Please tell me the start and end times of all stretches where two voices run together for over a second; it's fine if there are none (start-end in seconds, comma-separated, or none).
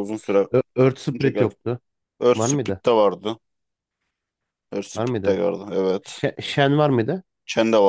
none